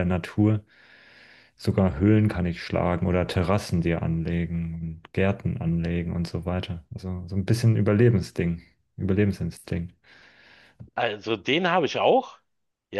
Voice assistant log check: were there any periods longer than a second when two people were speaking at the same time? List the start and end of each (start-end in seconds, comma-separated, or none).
none